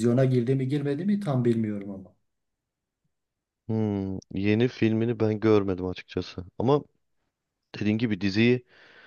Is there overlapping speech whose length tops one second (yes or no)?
no